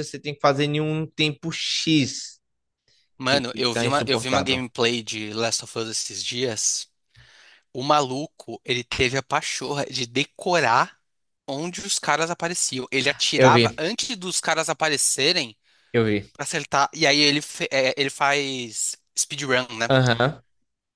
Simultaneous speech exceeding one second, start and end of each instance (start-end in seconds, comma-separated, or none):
3.3-4.6